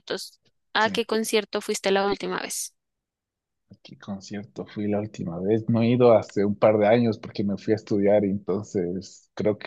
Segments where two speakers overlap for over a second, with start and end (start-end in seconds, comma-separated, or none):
none